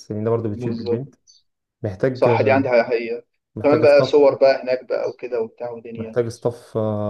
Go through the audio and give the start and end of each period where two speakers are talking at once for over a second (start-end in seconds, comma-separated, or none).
none